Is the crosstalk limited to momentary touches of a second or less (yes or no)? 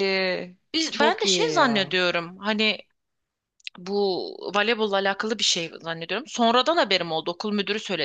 no